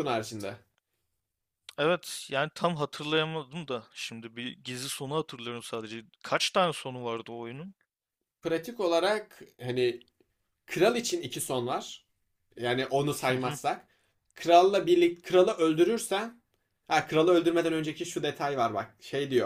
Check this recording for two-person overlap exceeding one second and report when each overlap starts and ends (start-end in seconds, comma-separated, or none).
none